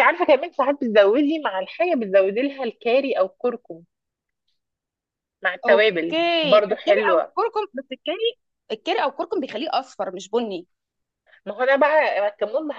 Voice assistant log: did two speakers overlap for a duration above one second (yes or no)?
yes